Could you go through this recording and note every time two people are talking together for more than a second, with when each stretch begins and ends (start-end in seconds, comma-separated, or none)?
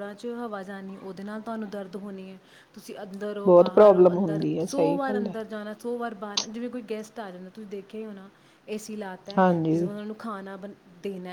3.5-5.3